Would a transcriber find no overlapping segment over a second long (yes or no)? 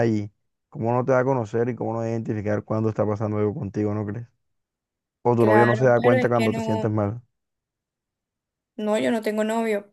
no